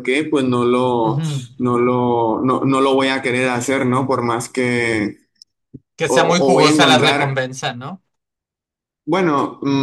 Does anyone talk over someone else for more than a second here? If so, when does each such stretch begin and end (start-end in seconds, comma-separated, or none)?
6.1-7.4